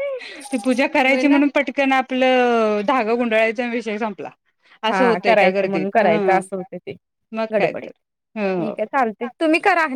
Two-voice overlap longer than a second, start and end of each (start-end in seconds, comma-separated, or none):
4.9-6.4